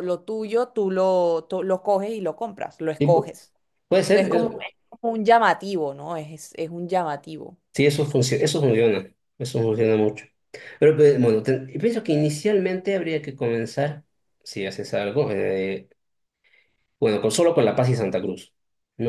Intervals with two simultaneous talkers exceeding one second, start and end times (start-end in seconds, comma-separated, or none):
none